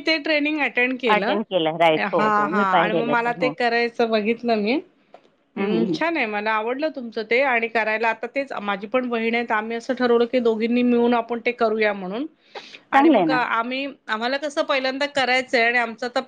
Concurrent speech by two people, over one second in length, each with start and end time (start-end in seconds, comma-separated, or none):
1.2-3.5